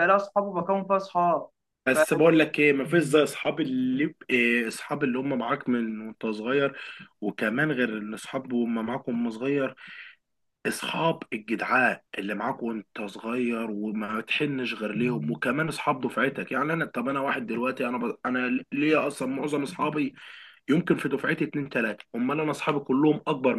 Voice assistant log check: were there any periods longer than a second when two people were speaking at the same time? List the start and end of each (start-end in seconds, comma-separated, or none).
none